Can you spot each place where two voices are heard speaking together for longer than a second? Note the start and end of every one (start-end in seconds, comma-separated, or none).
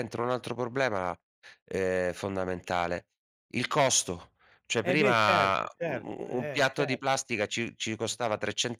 4.8-7.0